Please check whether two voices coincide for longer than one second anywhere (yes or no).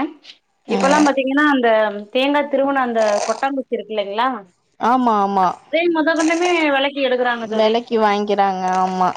no